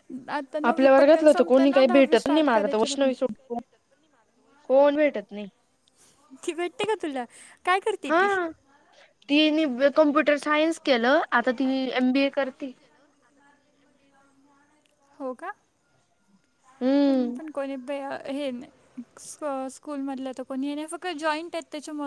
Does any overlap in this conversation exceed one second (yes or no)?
yes